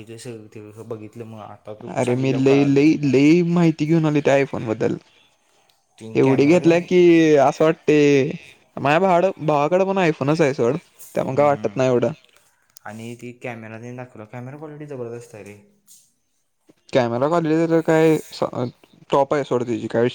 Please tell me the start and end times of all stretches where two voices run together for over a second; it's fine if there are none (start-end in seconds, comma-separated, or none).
none